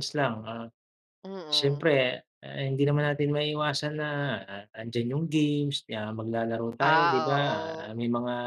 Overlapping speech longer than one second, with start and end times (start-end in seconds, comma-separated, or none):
none